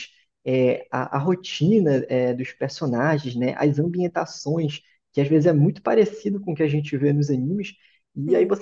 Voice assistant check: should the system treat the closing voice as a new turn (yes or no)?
no